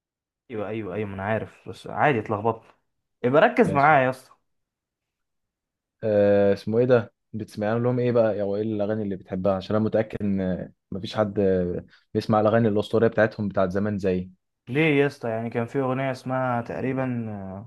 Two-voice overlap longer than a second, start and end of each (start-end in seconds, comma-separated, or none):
none